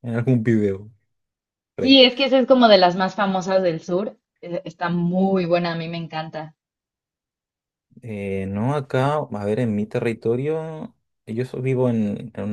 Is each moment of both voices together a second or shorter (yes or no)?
yes